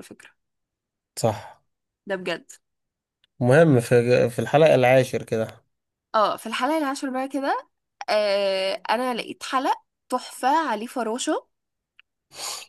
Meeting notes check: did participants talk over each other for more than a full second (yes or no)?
no